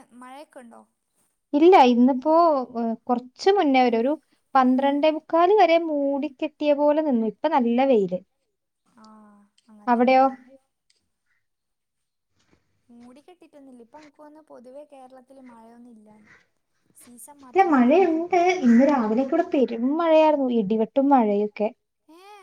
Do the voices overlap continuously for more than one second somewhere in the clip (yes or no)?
no